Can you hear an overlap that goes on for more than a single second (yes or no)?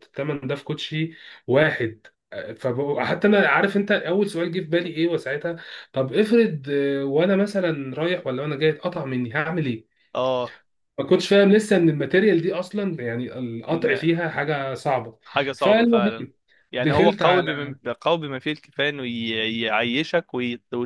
no